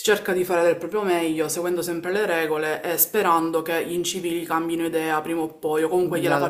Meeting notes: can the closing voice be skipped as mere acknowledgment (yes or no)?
no